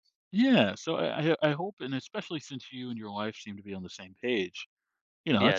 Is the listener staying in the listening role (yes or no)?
no